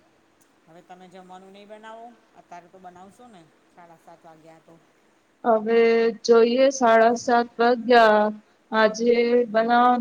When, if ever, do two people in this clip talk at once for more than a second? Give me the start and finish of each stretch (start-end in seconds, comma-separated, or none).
none